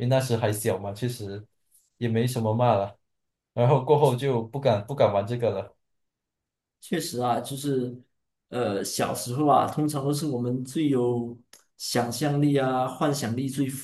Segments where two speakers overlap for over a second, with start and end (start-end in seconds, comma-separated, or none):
none